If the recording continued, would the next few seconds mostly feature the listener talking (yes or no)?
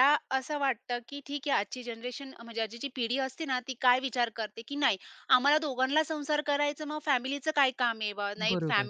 no